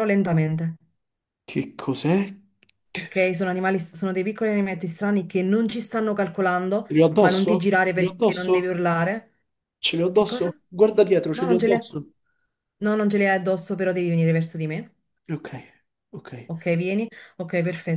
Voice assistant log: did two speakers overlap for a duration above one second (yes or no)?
yes